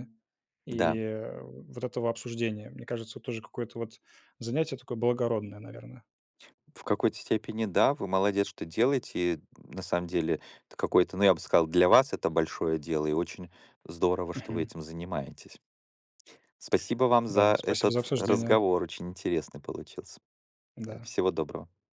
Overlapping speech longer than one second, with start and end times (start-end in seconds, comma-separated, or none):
17.3-18.6